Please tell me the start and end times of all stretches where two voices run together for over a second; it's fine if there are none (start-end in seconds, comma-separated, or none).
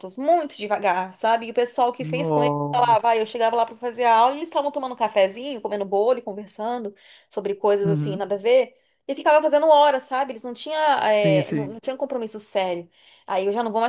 2.0-3.3